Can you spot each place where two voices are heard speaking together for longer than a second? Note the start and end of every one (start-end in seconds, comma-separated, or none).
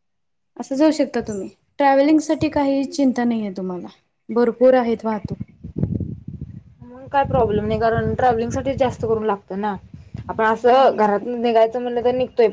none